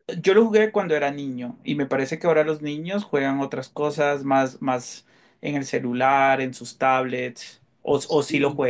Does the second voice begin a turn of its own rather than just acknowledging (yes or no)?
yes